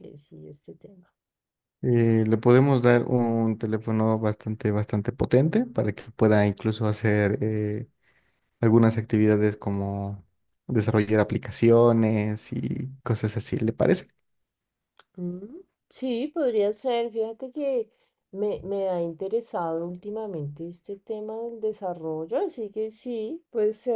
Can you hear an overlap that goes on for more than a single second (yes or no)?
no